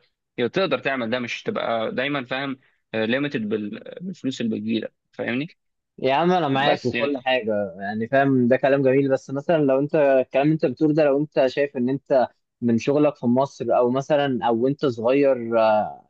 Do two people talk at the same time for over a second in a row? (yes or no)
no